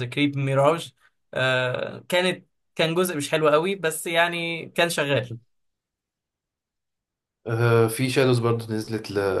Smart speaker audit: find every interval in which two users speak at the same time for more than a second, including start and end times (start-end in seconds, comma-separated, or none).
none